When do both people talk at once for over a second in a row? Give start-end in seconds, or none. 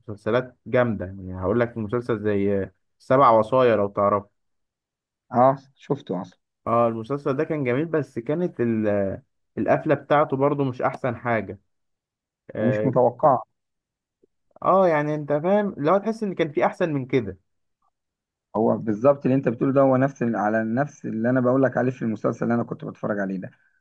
none